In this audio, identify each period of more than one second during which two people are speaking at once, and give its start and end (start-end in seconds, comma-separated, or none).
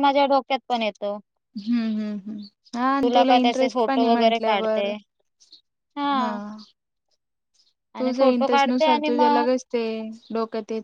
3.4-4.9, 8.0-9.4